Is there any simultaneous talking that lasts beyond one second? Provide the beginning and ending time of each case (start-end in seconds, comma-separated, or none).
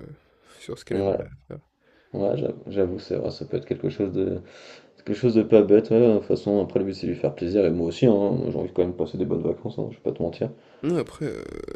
none